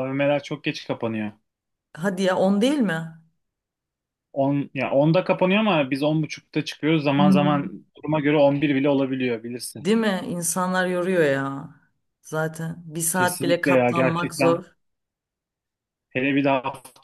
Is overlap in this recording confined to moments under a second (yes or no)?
no